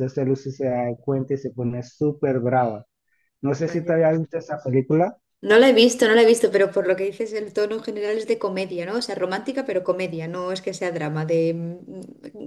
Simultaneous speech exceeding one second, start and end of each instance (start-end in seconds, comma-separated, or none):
none